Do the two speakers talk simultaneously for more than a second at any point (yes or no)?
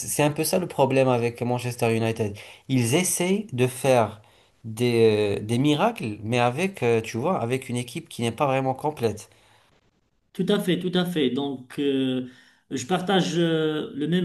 no